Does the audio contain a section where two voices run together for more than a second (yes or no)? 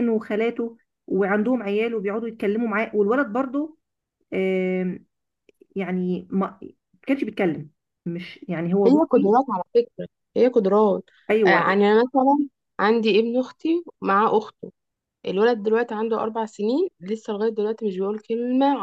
no